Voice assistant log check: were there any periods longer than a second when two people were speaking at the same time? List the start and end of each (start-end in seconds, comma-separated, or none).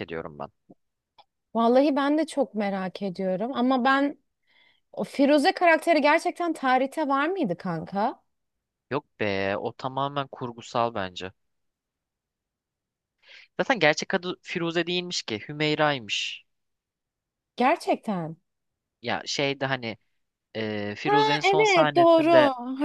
21.0-22.3